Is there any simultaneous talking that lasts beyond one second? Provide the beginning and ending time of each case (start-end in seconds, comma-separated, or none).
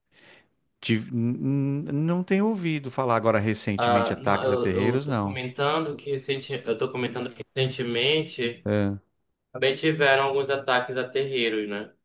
3.8-5.4